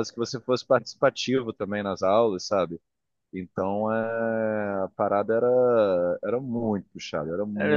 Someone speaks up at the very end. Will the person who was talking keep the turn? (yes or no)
yes